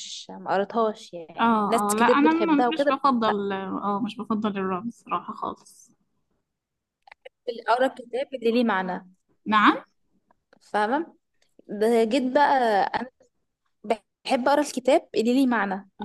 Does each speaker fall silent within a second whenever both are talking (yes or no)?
no